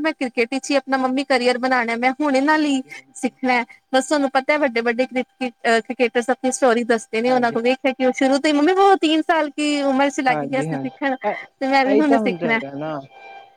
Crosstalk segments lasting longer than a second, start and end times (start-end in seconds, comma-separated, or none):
10.3-12.6